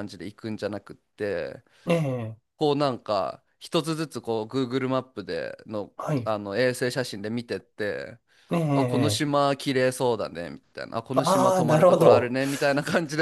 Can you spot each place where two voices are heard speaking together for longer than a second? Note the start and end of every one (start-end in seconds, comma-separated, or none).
11.1-12.4